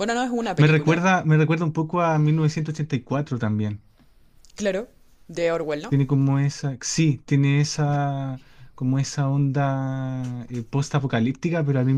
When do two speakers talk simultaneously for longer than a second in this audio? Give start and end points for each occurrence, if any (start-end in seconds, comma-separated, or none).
none